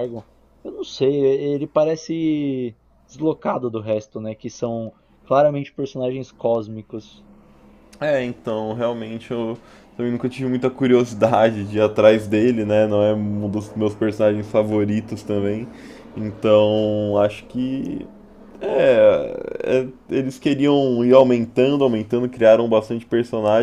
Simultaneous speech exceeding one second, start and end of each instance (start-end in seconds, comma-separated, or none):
none